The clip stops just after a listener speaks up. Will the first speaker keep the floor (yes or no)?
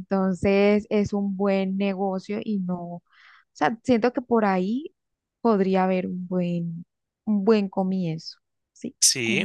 no